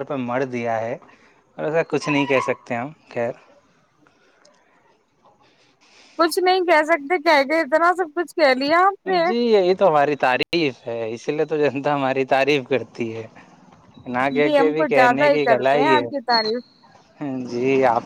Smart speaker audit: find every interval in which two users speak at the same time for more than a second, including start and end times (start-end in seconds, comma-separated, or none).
14.4-16.3